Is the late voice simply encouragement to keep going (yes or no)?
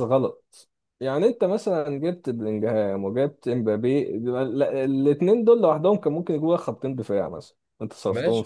no